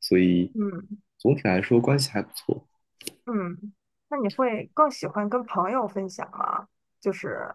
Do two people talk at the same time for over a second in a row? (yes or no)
no